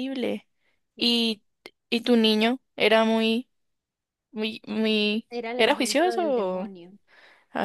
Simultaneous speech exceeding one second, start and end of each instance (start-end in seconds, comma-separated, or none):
5.3-6.7